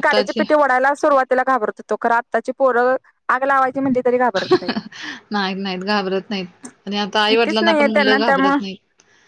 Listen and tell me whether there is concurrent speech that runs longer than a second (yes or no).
yes